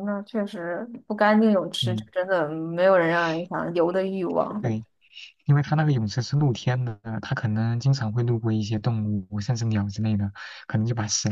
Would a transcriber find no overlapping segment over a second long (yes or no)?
yes